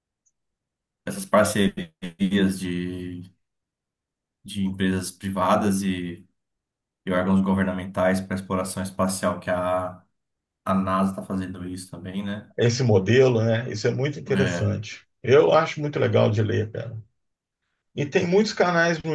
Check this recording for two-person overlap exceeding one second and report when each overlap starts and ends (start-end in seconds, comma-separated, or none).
none